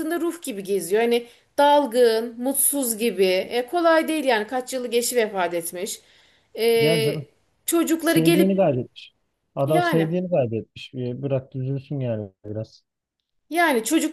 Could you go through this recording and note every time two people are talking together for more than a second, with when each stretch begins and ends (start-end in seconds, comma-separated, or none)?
none